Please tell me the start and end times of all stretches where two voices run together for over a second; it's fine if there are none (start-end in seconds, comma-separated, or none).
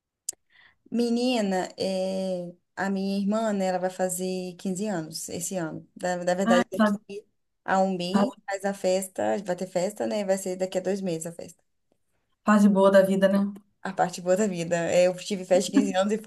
none